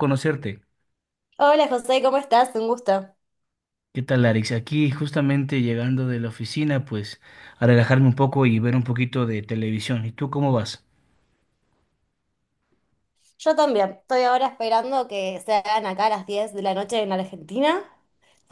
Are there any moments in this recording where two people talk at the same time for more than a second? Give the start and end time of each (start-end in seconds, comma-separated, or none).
none